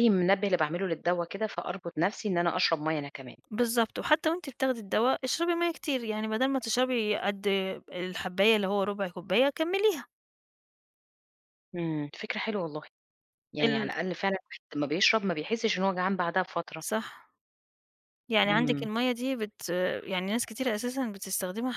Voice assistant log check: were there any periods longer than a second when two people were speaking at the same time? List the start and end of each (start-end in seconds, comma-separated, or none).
none